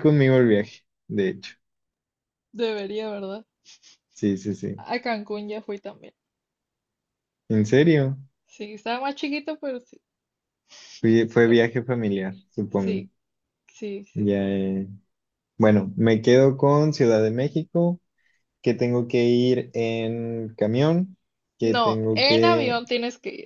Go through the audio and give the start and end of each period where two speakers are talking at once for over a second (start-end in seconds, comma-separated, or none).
21.6-22.8